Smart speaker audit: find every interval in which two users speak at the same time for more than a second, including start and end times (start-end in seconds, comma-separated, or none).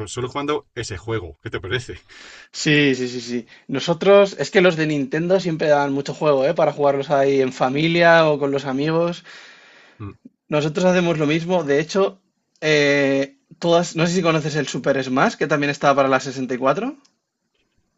none